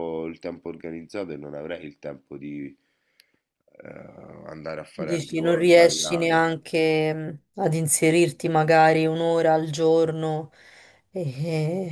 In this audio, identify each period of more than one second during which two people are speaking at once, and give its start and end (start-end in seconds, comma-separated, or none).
5.0-6.4